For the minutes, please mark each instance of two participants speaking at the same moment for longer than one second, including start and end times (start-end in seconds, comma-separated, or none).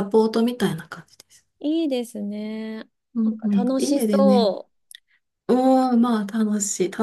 3.1-4.5